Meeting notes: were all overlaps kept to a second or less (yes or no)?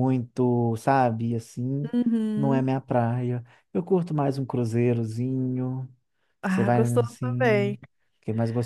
no